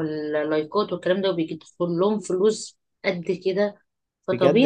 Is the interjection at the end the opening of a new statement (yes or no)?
yes